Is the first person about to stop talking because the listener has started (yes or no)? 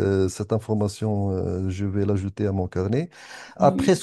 no